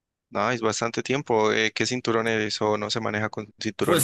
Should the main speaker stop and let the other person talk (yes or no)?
yes